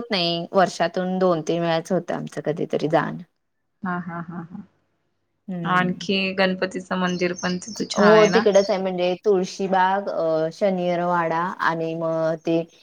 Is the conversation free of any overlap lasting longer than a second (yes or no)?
yes